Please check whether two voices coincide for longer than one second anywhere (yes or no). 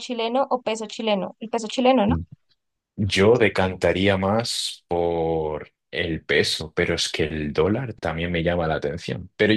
no